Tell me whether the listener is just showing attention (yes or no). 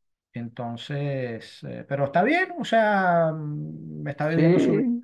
yes